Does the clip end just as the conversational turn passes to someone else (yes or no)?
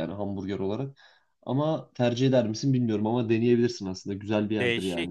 yes